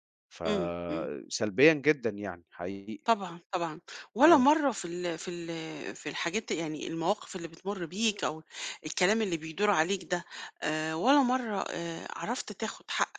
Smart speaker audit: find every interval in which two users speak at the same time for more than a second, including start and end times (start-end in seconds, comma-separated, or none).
none